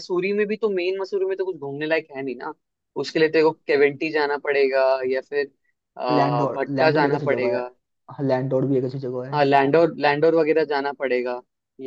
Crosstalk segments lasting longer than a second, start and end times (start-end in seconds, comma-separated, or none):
6.1-7.6